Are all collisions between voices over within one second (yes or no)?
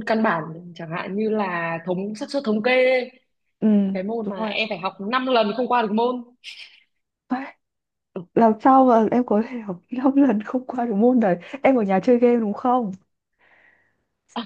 yes